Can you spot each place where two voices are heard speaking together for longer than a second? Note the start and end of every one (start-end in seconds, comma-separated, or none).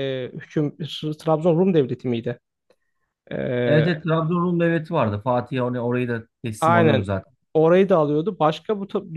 none